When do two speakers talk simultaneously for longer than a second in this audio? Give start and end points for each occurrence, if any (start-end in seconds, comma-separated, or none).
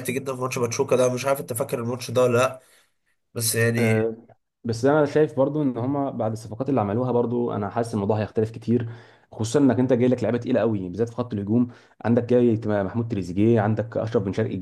none